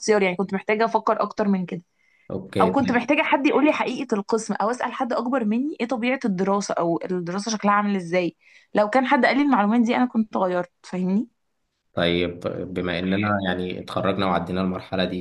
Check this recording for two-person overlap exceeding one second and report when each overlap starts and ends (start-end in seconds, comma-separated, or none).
none